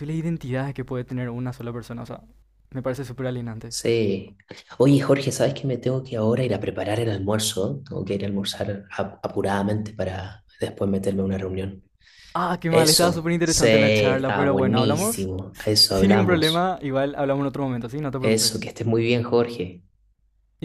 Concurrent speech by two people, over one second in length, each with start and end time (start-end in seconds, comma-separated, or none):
12.7-16.8